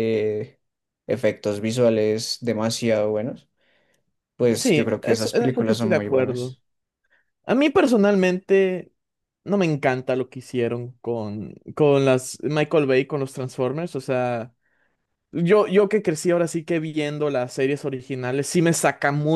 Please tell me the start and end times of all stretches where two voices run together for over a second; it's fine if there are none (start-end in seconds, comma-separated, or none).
4.5-6.6